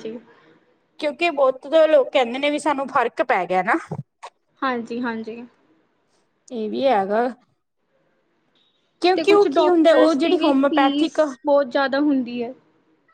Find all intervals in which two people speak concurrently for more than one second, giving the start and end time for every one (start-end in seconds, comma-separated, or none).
9.2-11.2